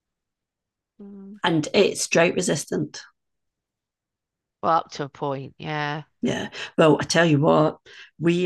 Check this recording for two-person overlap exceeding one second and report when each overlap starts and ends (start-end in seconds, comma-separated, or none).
none